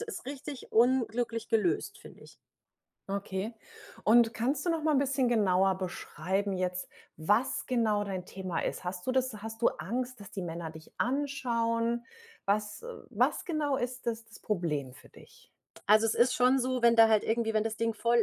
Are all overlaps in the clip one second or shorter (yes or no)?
yes